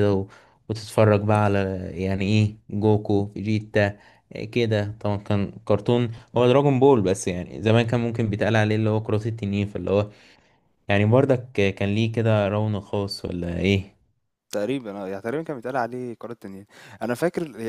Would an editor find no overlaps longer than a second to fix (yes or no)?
yes